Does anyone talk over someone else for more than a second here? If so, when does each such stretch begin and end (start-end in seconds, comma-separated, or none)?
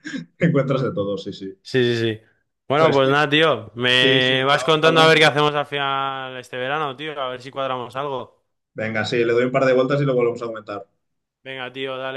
4.0-5.3